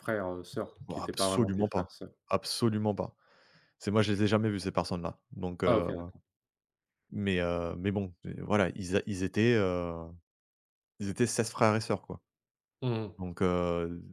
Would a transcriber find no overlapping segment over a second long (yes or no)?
no